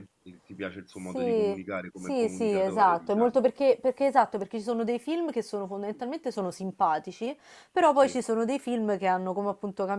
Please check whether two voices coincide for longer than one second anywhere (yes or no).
yes